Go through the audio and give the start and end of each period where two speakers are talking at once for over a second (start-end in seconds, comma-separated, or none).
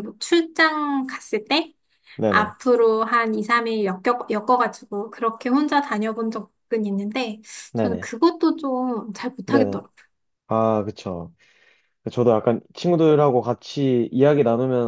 none